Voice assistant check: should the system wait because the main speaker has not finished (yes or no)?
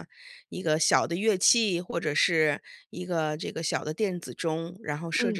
yes